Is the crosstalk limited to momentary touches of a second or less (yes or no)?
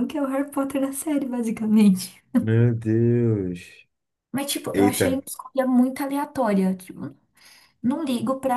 yes